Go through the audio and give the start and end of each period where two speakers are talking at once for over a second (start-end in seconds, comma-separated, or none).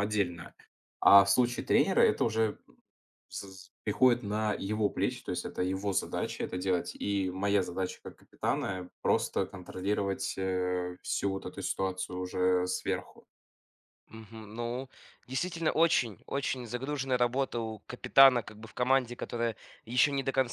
none